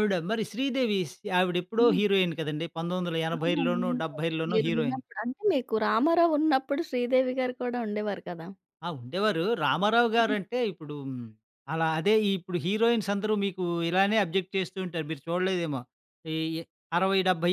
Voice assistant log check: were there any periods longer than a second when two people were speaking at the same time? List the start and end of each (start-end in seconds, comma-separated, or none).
3.4-5.0